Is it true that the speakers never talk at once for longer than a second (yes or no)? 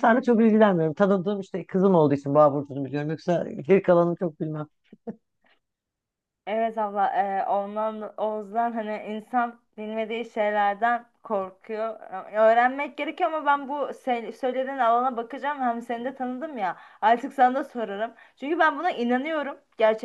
yes